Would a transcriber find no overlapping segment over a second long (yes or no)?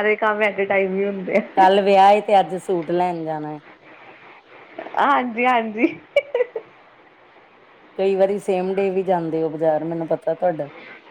yes